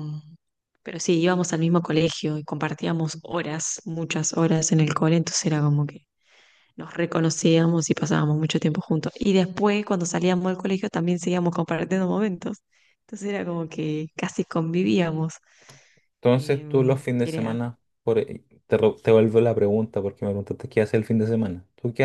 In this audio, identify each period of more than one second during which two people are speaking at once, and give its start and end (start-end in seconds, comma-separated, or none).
16.4-17.6